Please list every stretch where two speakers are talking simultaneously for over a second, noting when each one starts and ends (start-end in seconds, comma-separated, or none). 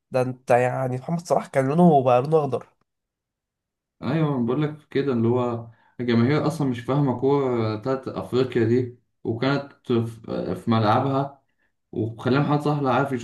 none